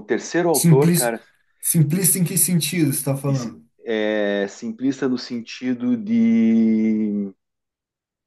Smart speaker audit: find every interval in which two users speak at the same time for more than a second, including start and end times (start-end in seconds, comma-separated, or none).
none